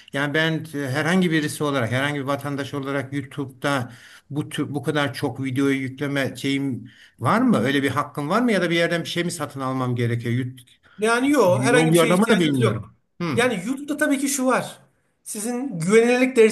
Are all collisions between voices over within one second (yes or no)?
no